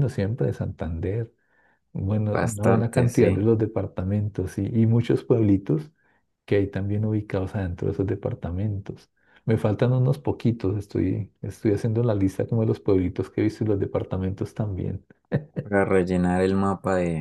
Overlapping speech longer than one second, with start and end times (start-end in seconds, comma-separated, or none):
2.2-3.4